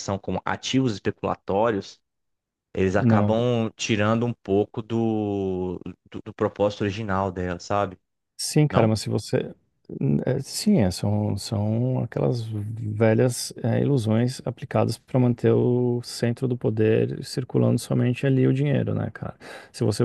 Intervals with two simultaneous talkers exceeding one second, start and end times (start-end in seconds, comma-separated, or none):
none